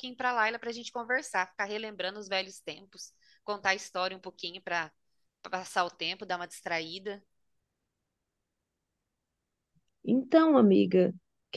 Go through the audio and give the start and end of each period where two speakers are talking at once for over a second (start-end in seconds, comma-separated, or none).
none